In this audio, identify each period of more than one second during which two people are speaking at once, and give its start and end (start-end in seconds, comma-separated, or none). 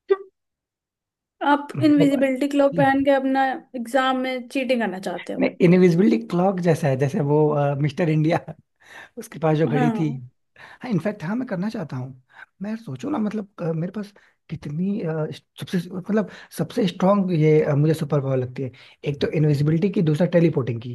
none